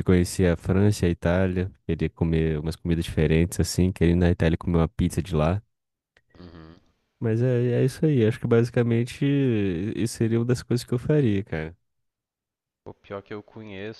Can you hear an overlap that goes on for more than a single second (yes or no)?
no